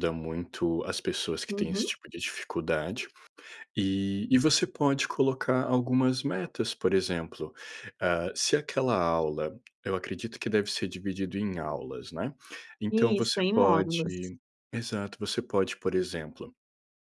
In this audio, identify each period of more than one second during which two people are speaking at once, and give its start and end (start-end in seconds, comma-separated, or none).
12.9-14.1